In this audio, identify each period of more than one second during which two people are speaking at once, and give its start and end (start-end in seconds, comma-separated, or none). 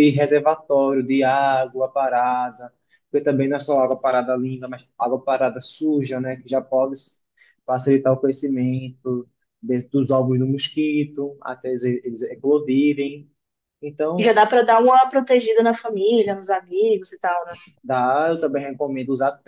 none